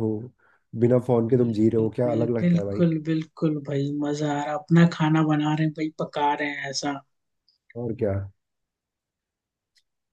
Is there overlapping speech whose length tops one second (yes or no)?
yes